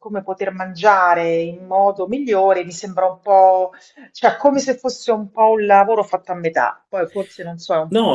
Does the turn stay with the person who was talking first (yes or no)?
no